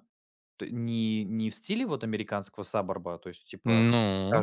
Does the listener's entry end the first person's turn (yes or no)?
no